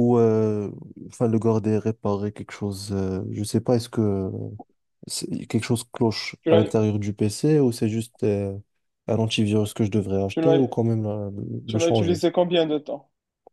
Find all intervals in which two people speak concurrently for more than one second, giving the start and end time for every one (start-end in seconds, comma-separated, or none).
none